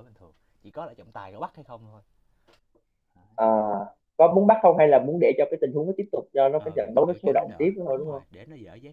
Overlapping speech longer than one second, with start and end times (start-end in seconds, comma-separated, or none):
6.6-8.2